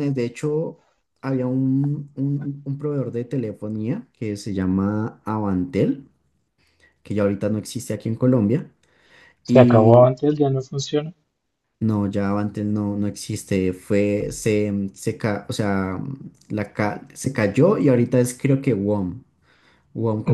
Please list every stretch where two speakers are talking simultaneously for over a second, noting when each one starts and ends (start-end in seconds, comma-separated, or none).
none